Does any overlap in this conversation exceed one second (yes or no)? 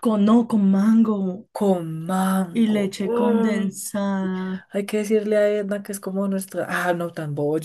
yes